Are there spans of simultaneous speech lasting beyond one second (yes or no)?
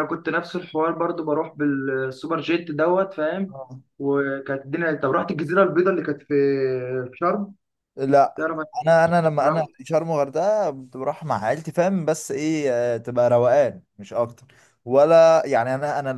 no